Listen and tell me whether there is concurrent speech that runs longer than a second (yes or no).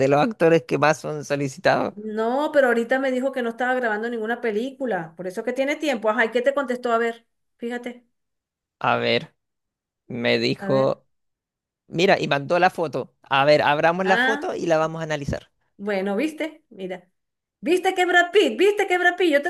no